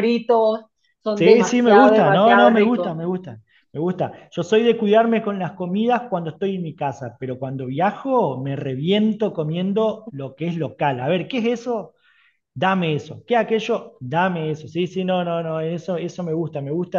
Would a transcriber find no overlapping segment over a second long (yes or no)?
no